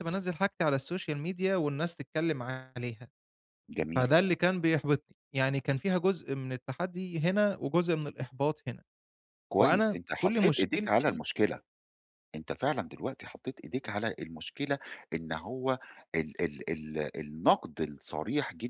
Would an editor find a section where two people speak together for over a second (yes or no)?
yes